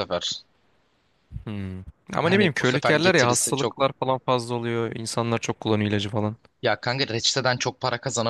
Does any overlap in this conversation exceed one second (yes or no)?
yes